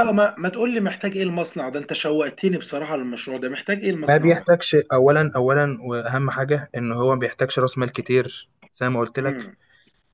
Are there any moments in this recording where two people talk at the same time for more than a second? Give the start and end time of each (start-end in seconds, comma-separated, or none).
none